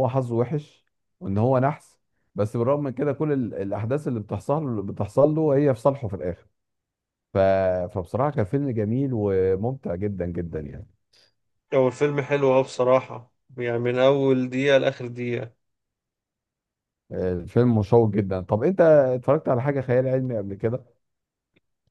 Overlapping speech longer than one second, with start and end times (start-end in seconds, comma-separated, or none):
none